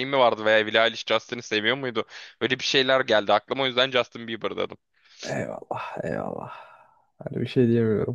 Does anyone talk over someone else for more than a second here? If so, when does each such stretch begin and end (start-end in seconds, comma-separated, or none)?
none